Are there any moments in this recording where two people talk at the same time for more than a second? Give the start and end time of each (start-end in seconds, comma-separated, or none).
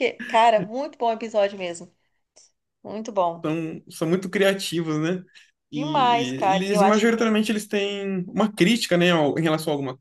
5.7-7.3